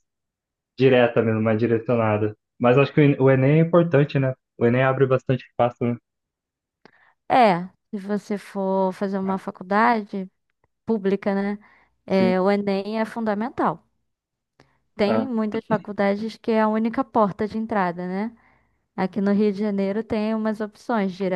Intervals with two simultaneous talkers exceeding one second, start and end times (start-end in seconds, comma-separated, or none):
none